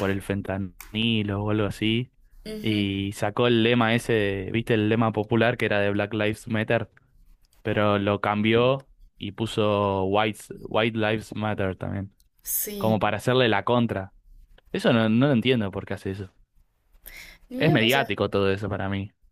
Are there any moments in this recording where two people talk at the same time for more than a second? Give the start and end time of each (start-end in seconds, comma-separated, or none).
none